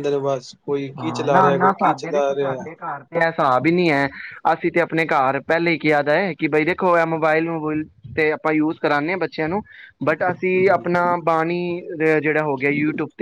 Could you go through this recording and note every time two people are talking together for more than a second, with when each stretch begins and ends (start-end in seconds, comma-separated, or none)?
1.0-2.7